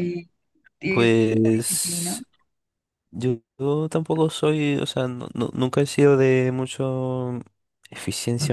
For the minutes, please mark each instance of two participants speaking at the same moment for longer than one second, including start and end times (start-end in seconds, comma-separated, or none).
0.9-2.2